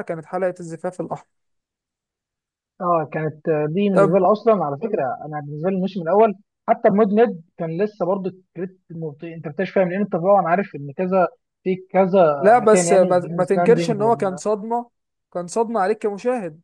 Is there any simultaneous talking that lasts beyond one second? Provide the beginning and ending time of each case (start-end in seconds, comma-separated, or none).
12.4-14.4